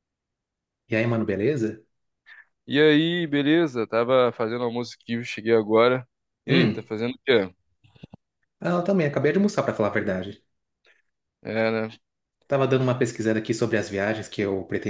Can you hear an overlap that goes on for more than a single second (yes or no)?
no